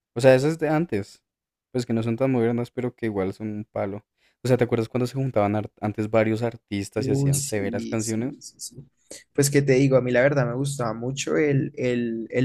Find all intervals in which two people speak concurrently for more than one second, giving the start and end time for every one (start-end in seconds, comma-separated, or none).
7.0-8.4